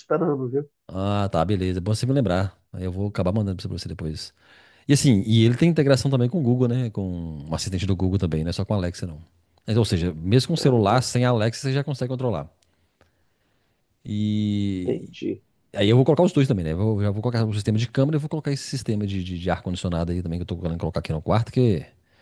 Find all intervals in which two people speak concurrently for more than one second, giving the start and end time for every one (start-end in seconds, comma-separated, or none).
none